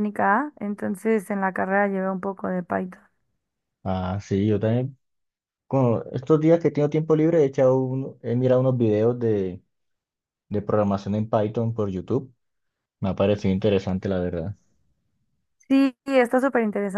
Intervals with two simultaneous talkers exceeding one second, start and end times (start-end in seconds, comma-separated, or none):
none